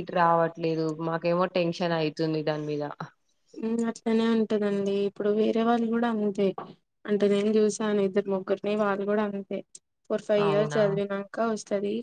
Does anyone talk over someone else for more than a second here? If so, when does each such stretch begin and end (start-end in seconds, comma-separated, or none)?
none